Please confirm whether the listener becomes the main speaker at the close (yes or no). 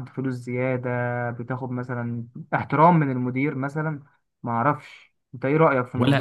yes